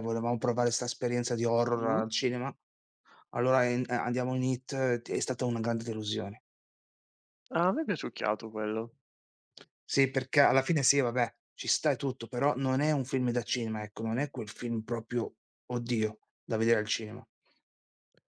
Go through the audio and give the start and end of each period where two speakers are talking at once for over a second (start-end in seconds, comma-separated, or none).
none